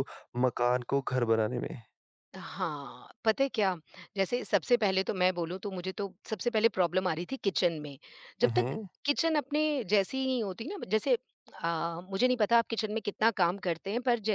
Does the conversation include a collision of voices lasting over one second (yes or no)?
no